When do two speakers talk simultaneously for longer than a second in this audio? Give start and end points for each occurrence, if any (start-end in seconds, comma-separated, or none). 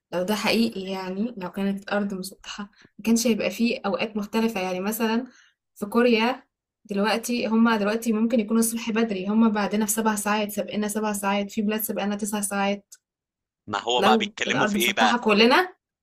14.0-15.2